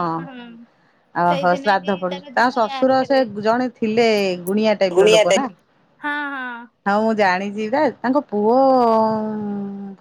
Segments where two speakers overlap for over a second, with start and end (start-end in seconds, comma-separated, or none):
1.3-3.2